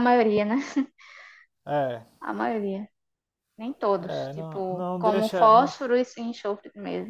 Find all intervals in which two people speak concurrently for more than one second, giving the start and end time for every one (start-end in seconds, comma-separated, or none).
4.0-5.7